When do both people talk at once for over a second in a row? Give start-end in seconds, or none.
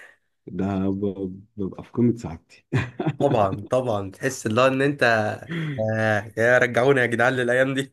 none